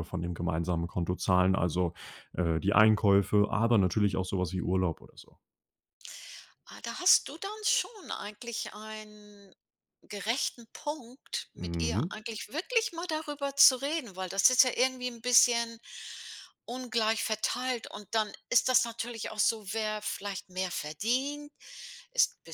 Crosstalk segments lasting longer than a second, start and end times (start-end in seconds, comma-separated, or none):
none